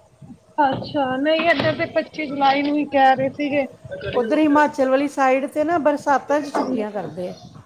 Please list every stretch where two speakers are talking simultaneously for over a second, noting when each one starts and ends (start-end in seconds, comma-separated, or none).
none